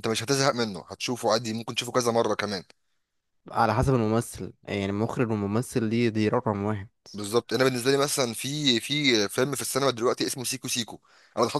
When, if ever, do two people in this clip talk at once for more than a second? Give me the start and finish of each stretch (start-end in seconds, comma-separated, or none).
none